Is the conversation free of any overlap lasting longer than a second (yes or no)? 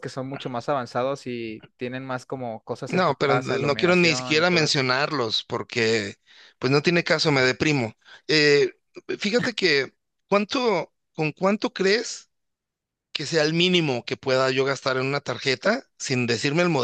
no